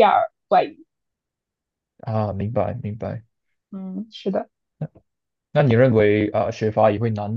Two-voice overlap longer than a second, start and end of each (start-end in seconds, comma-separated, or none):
none